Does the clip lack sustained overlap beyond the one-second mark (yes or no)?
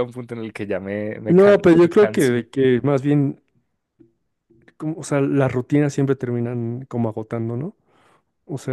no